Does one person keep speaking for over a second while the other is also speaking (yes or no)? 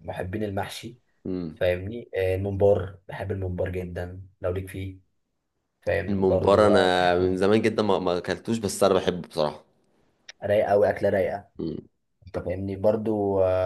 yes